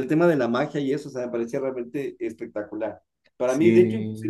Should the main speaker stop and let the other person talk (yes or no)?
no